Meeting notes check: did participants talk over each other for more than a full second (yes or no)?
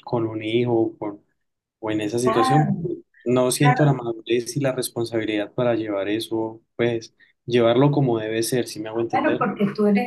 no